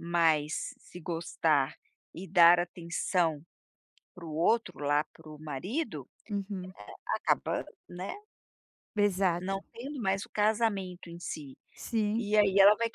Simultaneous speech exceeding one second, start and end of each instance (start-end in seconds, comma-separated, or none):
none